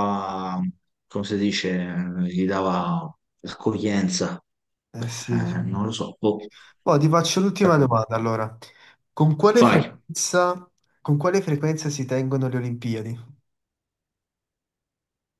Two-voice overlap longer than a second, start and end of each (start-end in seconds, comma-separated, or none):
none